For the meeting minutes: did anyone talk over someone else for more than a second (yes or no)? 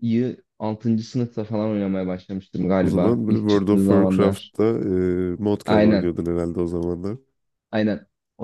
yes